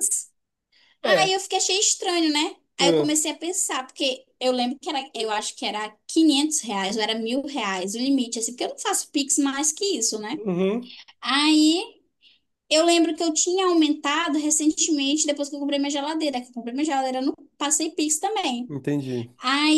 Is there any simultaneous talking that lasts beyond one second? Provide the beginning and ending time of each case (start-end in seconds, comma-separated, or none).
none